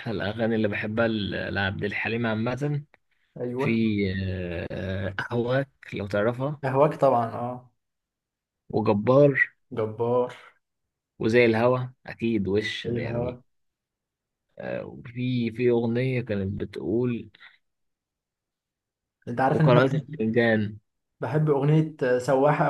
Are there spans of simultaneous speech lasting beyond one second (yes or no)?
no